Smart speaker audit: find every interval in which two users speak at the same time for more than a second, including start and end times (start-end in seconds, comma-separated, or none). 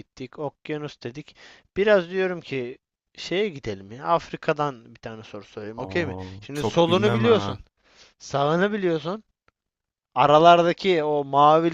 5.8-7.6